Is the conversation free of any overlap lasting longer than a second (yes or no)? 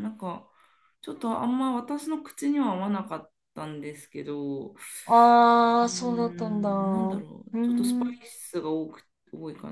no